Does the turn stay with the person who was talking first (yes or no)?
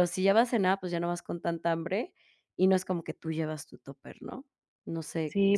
no